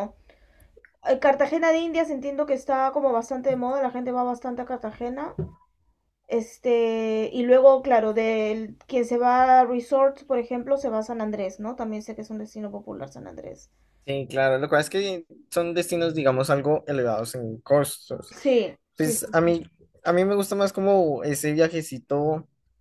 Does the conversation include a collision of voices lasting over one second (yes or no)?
no